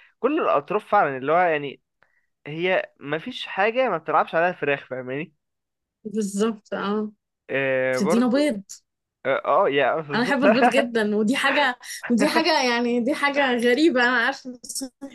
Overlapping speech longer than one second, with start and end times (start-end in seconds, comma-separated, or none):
none